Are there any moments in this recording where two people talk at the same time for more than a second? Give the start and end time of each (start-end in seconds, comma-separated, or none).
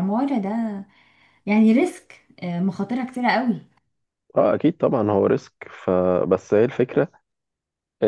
none